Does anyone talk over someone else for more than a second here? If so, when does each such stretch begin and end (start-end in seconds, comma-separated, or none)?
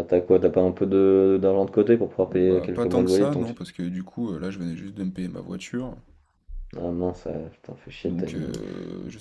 2.2-3.5